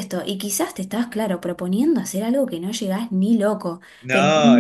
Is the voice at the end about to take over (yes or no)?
no